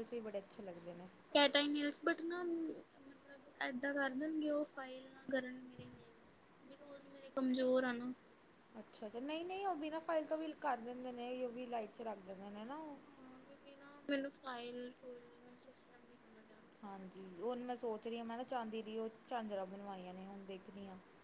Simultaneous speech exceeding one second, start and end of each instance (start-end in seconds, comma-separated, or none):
none